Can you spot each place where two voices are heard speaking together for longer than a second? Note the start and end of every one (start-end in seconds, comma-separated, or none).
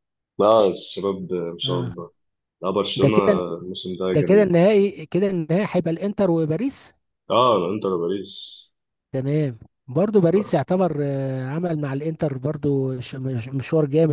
none